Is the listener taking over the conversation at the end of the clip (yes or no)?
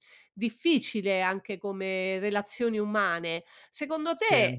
no